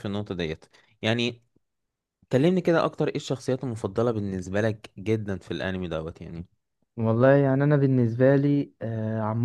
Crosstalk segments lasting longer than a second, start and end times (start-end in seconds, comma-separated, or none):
none